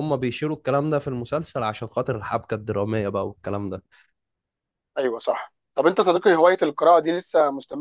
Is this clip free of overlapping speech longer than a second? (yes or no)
yes